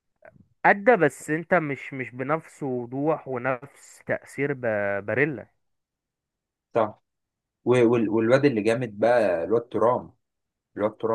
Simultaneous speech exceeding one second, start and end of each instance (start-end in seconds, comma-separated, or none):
none